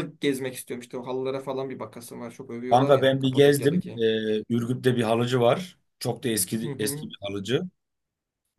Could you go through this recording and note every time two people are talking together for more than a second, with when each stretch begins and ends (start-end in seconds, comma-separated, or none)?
2.7-4.0